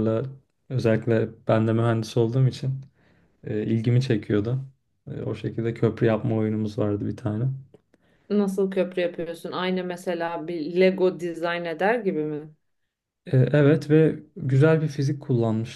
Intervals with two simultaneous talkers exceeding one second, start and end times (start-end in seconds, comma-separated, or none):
none